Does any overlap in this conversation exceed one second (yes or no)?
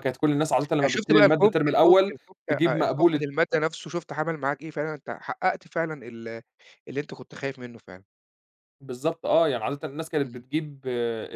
yes